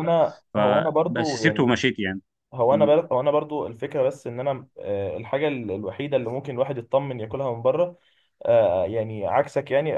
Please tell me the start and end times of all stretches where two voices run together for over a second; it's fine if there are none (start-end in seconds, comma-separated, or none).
0.5-1.8